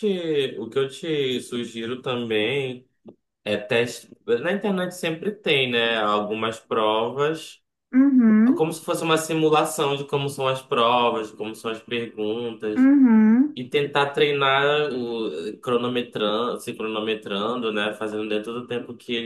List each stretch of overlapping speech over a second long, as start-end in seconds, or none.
none